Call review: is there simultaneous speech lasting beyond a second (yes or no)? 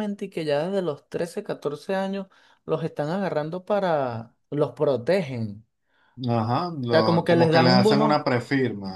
yes